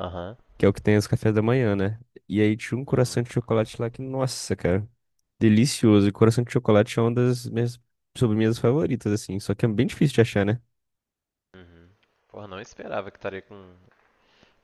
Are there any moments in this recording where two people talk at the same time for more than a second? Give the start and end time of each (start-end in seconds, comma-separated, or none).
none